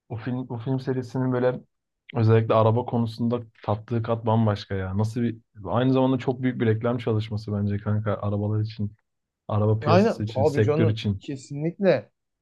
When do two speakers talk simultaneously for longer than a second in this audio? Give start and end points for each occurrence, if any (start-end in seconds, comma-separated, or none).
9.8-11.2